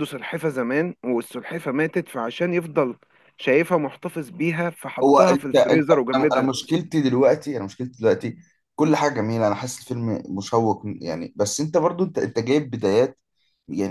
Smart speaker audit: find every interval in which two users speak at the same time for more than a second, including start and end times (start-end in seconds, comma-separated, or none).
5.0-6.5